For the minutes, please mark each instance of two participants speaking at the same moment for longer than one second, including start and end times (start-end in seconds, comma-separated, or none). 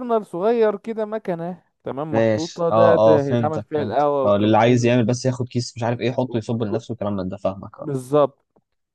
2.1-4.9